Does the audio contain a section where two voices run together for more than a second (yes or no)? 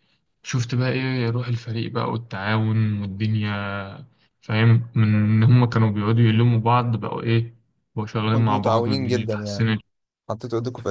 yes